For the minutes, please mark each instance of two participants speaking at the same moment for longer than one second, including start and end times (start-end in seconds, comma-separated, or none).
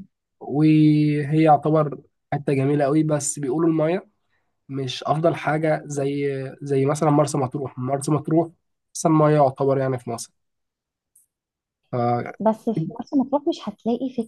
none